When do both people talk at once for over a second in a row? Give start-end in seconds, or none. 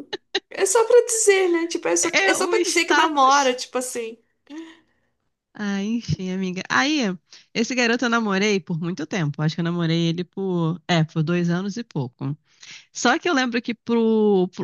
2.2-3.6